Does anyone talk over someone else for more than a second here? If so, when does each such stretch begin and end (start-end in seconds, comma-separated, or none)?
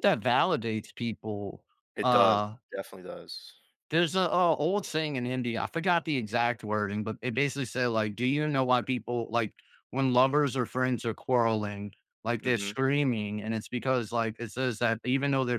none